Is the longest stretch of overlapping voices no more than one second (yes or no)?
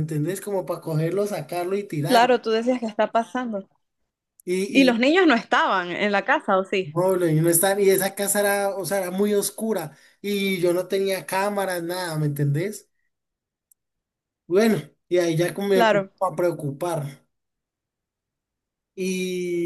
yes